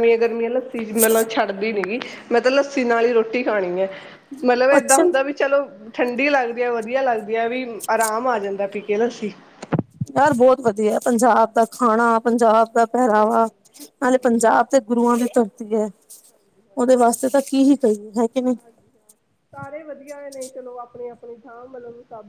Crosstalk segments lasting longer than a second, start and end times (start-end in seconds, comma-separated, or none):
none